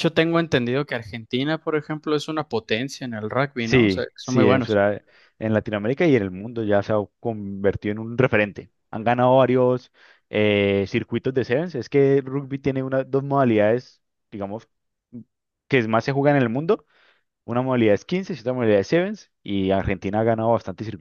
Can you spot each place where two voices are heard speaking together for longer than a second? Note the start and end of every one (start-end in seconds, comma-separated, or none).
3.6-4.8